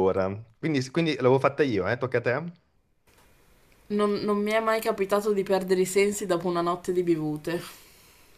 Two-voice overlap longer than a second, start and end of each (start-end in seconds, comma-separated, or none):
none